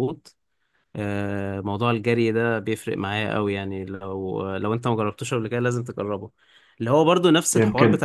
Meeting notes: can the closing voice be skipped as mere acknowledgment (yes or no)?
yes